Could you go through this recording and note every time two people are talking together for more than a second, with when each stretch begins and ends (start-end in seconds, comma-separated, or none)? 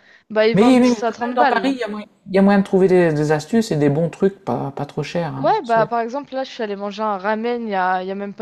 0.5-1.8